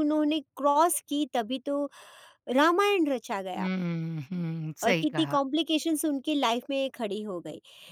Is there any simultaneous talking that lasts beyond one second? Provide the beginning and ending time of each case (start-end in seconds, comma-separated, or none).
none